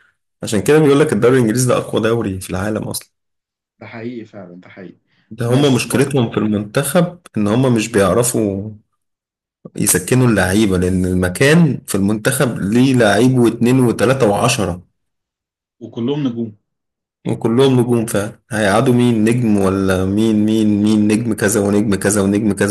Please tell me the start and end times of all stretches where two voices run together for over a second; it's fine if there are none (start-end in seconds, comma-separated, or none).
none